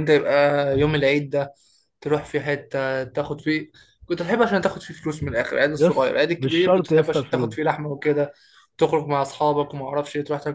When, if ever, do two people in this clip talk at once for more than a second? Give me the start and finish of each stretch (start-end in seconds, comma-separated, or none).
5.7-7.6